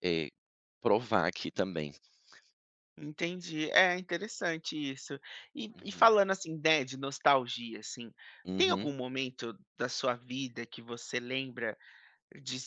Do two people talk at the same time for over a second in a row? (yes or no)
no